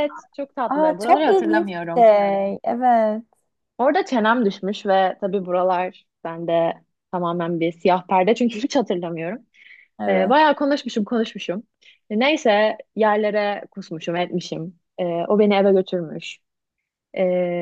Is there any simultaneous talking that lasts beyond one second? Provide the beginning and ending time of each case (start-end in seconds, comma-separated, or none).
0.7-2.1